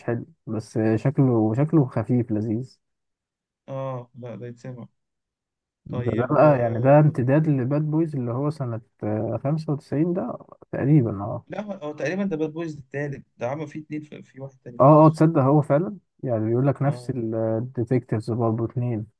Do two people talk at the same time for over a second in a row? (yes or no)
yes